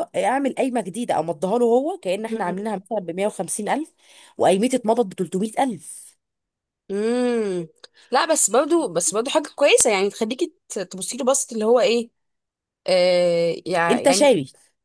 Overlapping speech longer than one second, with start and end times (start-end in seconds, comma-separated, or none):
none